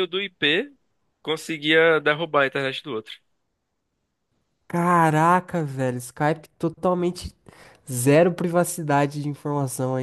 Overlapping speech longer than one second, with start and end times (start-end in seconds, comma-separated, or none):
none